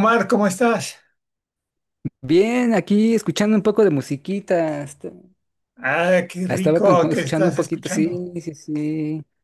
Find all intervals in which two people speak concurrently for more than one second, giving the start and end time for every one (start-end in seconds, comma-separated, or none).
6.5-8.3